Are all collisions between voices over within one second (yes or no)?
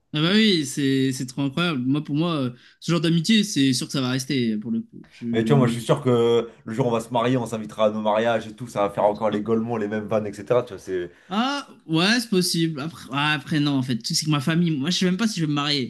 yes